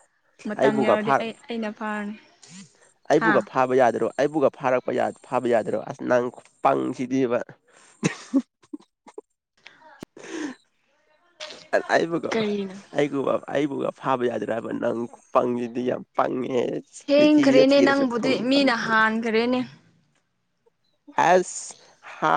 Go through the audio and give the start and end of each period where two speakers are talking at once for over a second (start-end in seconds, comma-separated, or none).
17.1-18.9